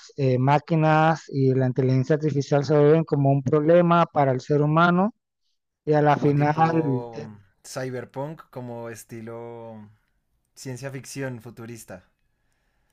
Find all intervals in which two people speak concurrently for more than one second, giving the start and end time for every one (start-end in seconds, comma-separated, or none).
6.1-7.3